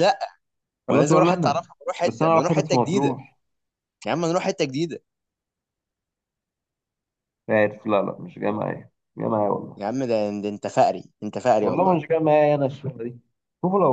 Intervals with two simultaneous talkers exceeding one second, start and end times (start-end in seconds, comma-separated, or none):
0.9-3.2